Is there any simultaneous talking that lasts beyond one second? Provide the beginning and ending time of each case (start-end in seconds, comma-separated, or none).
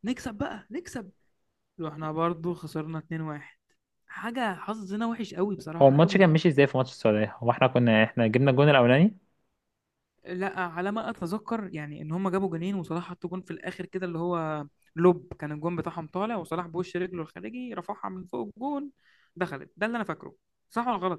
none